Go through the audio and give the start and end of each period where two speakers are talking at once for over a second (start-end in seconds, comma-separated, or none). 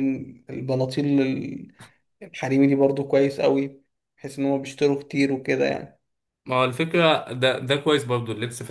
none